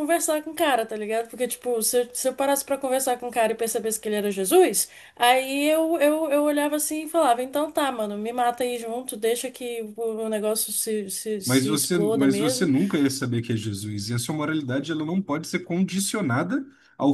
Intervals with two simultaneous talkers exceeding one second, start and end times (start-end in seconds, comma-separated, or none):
11.4-12.7